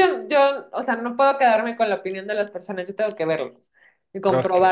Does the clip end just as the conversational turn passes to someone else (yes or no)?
no